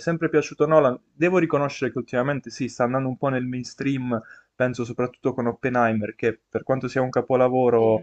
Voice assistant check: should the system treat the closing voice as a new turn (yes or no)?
no